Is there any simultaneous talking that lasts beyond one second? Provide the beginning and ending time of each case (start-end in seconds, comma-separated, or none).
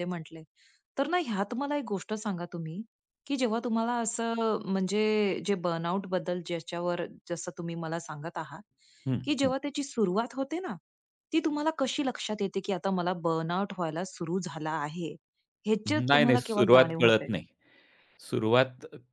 15.9-17.3